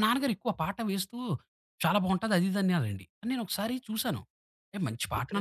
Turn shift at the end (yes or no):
no